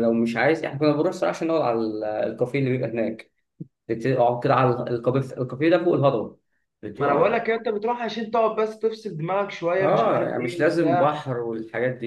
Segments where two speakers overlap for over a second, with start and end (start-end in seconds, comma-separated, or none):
9.8-11.2